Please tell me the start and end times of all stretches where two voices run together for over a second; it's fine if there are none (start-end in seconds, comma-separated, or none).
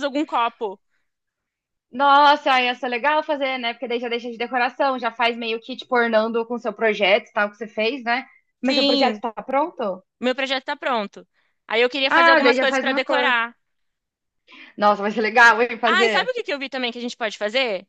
12.1-13.3